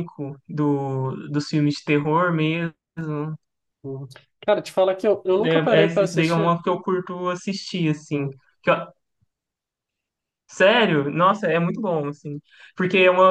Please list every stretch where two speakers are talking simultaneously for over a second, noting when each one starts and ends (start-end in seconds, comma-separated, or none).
5.2-6.5